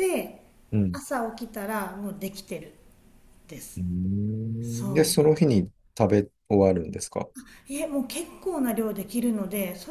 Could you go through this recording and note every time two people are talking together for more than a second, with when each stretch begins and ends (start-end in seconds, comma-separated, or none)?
none